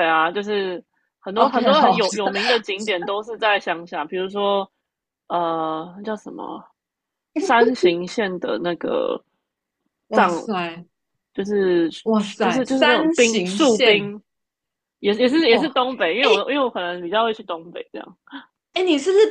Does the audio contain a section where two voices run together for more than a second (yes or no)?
yes